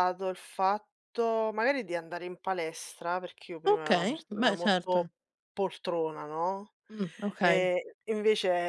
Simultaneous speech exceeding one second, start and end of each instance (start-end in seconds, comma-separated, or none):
3.7-5.0